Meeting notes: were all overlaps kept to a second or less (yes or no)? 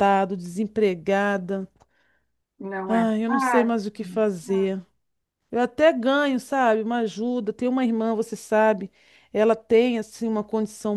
no